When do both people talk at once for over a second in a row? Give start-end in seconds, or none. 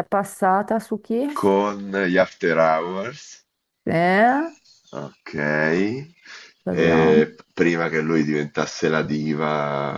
none